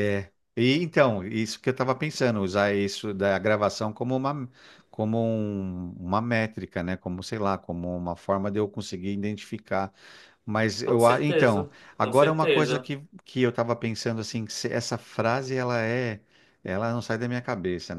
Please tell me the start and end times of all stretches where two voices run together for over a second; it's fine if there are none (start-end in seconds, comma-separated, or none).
10.8-12.9